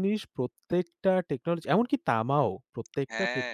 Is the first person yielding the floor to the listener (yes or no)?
no